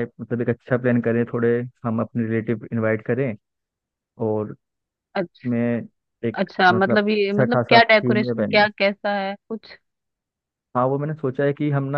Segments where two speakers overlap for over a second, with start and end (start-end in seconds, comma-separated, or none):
6.3-8.6